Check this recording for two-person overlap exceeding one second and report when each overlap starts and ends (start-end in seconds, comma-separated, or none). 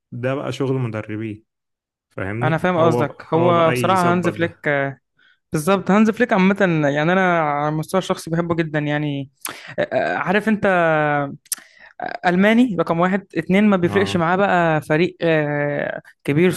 2.4-4.7